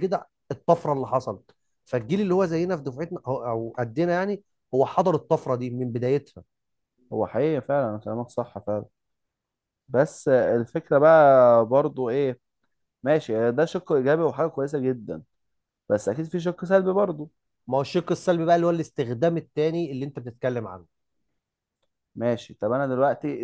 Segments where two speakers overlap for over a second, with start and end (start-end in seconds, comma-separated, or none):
none